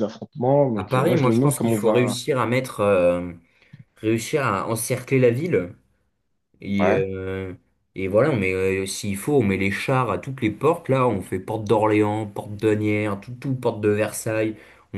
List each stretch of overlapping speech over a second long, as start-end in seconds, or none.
0.8-2.2